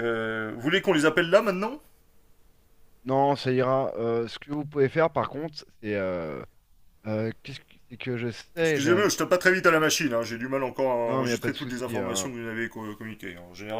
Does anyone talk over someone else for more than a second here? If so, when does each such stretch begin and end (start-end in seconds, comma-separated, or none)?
11.1-12.3